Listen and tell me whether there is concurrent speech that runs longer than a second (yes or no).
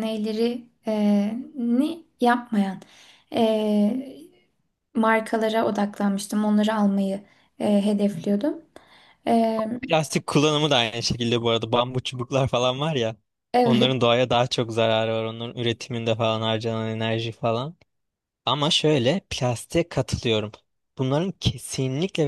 no